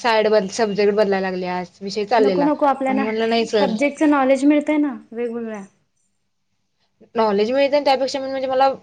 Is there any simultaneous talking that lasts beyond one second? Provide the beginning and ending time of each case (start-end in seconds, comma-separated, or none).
none